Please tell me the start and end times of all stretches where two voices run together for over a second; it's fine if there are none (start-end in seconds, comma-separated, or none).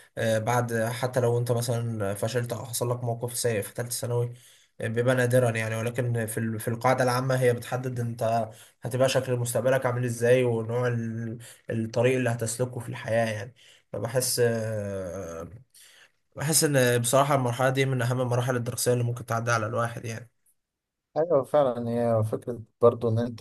none